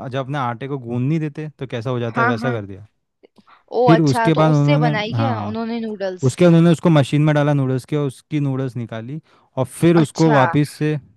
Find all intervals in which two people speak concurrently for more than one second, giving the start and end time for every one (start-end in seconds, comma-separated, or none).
3.9-5.6